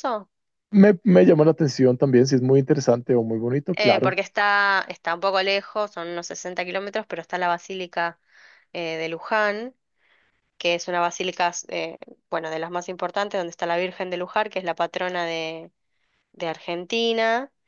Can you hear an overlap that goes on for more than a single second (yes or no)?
no